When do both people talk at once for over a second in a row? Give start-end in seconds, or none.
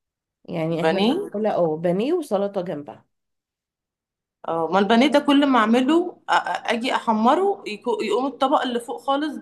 none